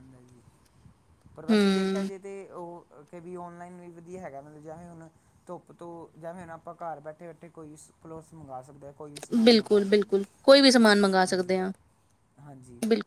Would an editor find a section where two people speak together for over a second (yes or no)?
yes